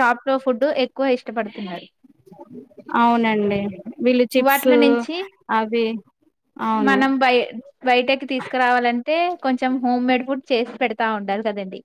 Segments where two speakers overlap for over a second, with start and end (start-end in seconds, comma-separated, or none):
none